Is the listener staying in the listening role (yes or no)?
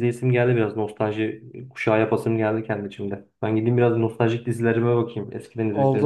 no